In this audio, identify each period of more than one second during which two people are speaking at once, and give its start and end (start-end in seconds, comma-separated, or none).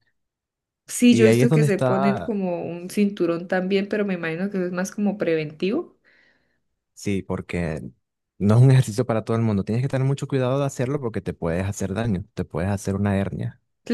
1.1-2.4